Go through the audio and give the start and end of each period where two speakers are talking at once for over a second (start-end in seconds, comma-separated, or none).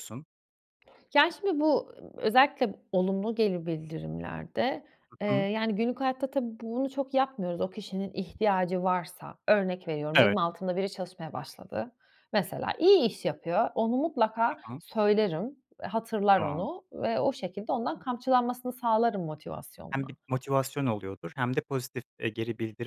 none